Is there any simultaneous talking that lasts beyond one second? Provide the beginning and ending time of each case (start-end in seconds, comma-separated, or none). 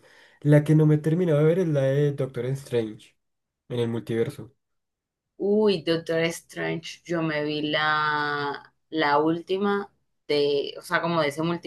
none